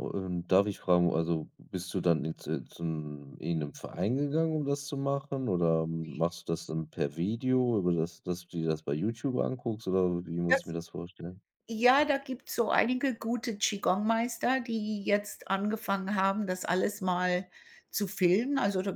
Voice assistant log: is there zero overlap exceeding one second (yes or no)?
yes